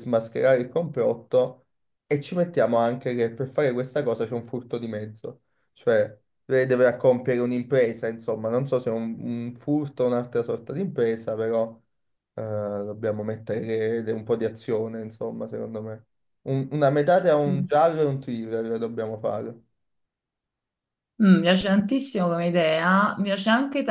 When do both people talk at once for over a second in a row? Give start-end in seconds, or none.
none